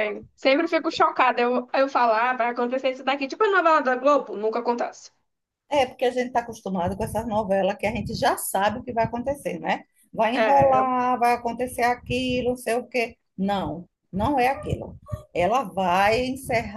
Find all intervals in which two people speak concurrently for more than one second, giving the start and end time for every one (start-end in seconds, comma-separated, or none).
none